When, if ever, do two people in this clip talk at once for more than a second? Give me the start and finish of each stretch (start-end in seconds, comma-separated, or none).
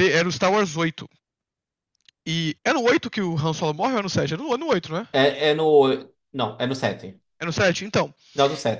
none